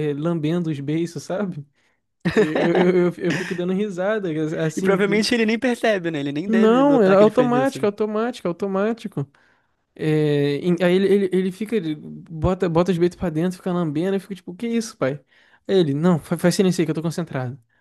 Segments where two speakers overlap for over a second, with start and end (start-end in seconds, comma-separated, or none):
6.5-7.9